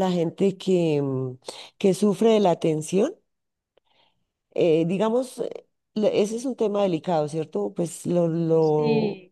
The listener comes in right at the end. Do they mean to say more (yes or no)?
no